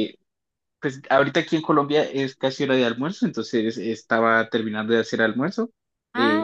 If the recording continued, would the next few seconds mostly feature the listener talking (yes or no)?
no